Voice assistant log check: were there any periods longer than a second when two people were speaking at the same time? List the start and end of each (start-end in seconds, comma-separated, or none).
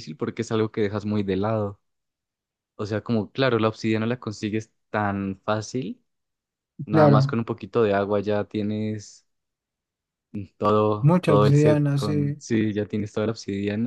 11.0-12.4